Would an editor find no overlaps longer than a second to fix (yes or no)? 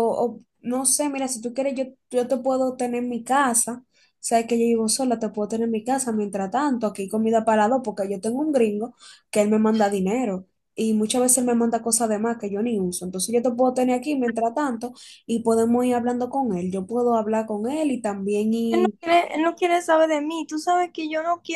yes